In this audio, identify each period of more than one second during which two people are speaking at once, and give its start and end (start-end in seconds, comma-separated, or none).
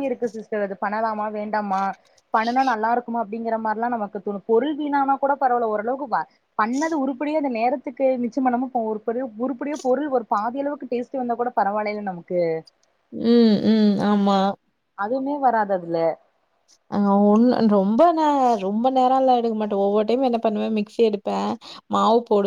none